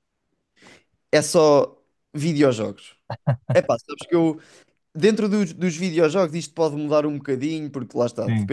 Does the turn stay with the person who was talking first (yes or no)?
yes